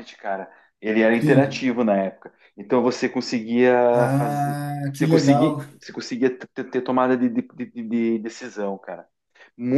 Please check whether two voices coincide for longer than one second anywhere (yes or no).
yes